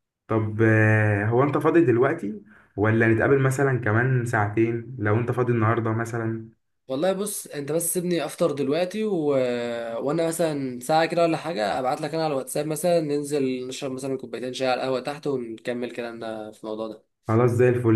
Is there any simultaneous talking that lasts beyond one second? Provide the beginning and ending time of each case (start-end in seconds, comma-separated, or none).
none